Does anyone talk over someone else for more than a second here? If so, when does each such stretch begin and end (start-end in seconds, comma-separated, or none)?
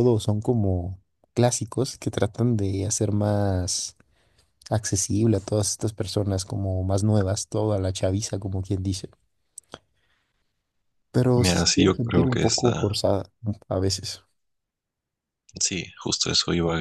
11.4-13.0